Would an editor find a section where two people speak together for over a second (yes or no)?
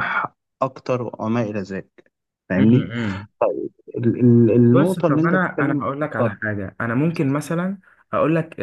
yes